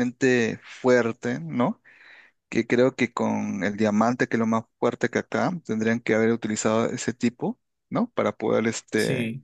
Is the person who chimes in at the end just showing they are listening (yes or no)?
yes